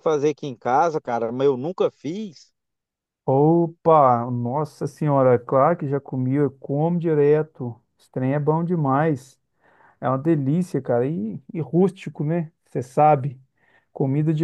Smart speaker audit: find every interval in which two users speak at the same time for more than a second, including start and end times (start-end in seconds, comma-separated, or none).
none